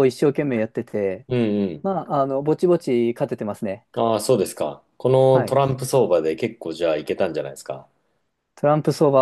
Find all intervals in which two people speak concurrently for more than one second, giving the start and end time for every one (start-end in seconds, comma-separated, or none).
none